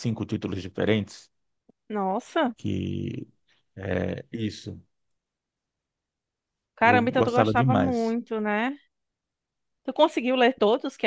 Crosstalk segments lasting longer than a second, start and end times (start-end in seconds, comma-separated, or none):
6.8-8.2